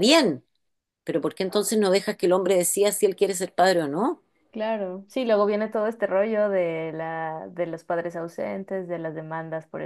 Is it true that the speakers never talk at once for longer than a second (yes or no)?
yes